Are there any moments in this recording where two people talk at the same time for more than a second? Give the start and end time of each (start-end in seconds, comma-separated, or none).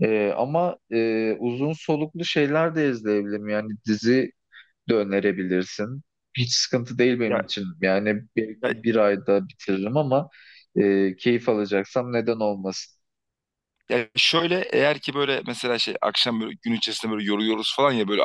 none